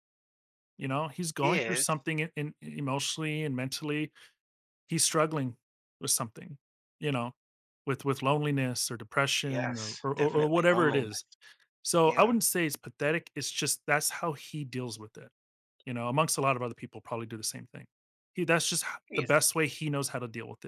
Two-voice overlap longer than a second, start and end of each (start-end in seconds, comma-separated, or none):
9.5-11.1